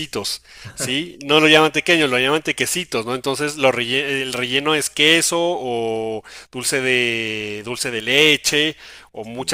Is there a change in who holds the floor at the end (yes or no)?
no